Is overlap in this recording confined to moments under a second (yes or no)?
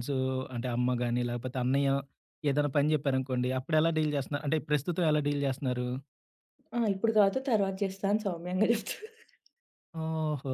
yes